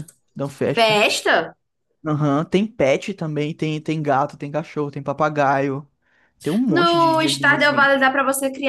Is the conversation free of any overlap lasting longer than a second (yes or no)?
no